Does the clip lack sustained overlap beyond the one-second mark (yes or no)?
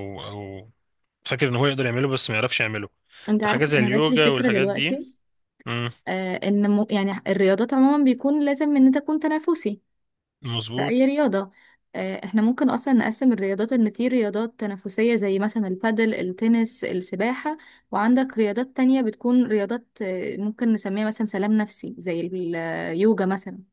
no